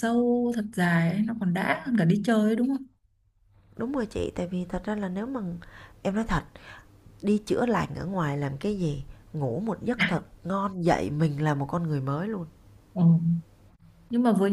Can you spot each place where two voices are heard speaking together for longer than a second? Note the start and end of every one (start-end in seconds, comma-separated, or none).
none